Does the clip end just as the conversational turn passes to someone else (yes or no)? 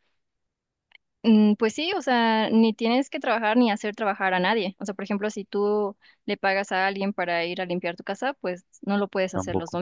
no